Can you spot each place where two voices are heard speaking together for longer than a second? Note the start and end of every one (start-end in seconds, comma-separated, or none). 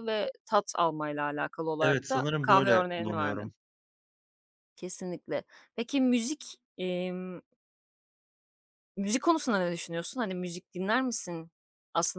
1.8-3.5